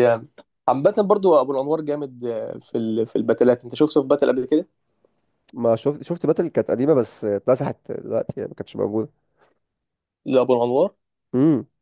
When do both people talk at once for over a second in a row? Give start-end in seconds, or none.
none